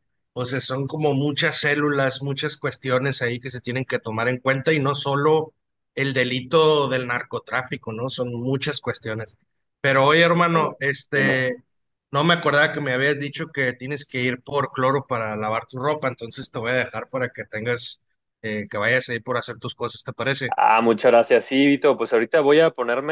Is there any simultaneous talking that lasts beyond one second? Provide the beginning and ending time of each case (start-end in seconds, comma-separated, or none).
10.1-11.4